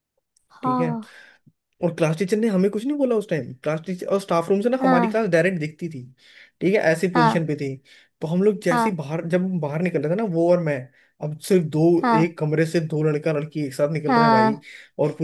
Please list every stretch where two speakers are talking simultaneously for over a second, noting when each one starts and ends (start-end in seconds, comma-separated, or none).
none